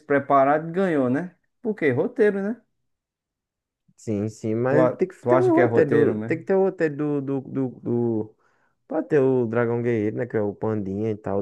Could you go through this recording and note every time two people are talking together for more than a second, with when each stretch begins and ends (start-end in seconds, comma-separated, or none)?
4.7-6.4